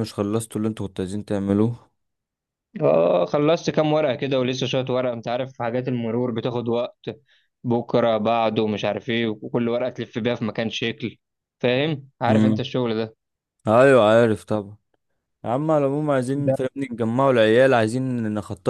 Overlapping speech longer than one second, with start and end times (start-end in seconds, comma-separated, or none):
none